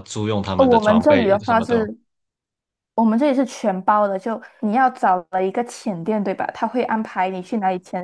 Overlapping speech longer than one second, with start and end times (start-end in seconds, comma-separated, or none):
0.6-1.8